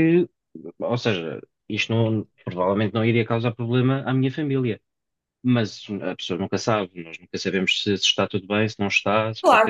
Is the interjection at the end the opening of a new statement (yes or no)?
yes